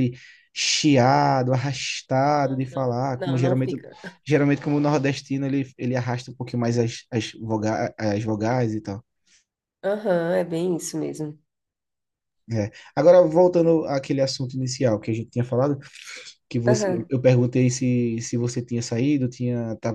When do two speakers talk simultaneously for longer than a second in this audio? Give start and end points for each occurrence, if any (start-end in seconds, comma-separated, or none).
2.3-3.8